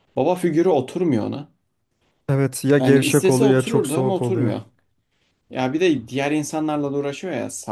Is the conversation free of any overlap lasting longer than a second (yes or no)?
no